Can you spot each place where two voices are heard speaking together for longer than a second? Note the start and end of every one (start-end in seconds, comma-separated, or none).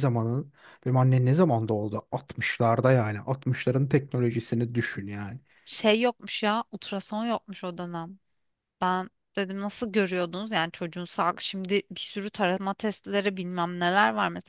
none